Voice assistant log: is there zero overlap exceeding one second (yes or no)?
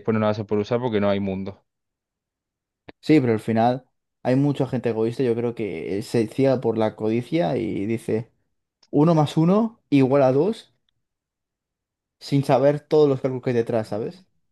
yes